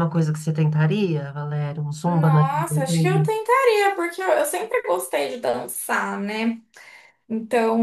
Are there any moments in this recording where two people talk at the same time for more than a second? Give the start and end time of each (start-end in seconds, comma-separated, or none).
none